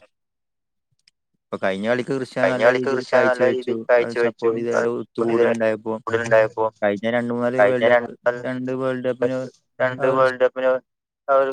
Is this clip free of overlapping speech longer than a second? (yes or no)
no